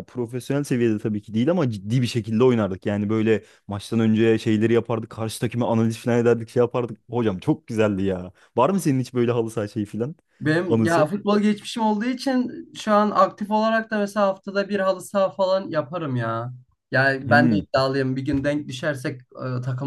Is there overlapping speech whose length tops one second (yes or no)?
no